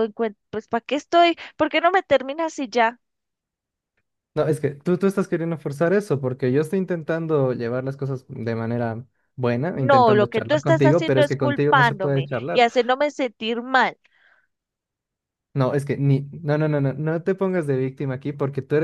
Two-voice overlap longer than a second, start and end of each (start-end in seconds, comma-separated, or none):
9.7-12.7